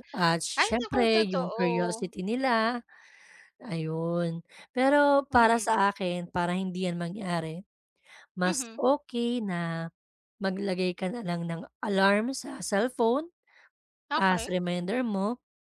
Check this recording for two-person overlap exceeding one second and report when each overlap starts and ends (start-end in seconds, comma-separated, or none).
0.6-2.1